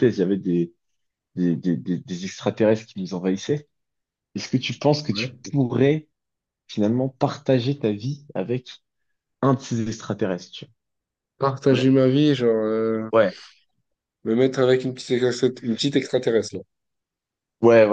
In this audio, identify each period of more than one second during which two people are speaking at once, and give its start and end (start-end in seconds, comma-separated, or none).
none